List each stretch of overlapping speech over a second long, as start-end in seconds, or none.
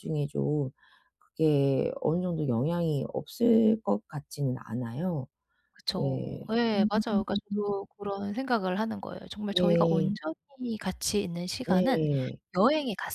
5.9-7.6